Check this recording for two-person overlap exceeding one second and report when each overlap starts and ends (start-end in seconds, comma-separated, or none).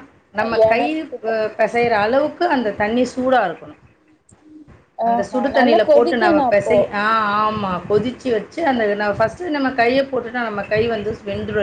5.1-6.8